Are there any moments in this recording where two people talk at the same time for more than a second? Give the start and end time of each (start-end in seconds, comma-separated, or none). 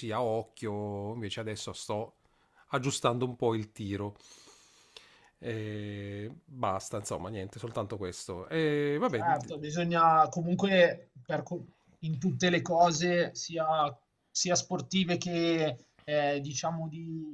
none